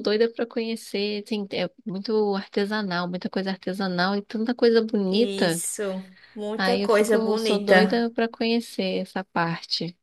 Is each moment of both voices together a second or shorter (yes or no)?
no